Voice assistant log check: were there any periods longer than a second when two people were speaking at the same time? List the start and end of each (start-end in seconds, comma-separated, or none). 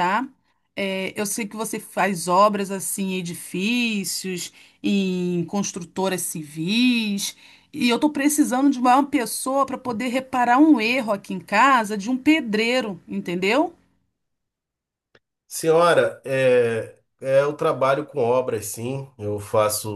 none